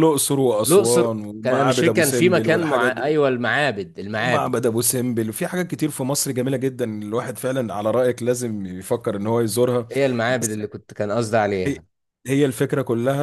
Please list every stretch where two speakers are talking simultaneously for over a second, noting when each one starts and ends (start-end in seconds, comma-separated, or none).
0.7-3.1